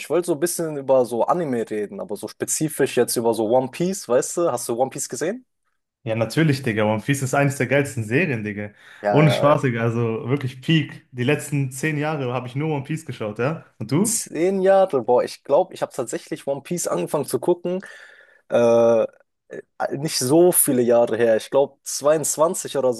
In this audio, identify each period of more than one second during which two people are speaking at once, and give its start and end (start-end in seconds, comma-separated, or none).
none